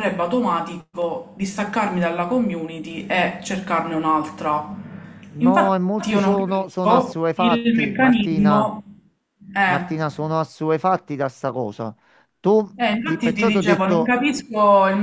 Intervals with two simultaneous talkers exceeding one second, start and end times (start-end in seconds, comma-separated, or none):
5.4-8.7, 12.8-14.2